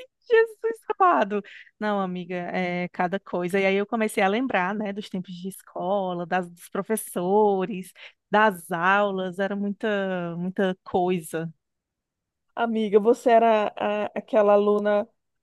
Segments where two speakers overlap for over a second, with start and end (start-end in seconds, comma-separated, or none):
none